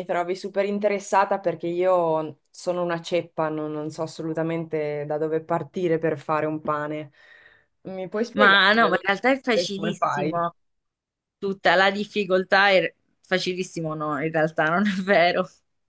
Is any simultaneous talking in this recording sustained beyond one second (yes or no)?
yes